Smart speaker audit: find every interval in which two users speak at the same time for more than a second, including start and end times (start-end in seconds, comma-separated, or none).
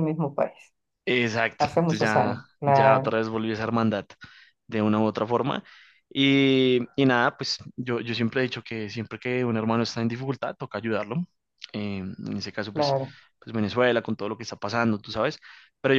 1.6-3.2